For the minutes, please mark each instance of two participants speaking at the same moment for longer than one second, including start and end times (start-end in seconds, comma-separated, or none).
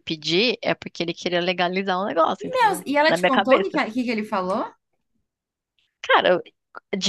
2.4-3.8